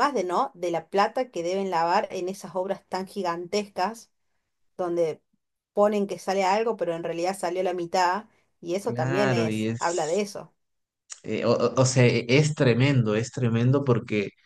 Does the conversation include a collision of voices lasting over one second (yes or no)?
yes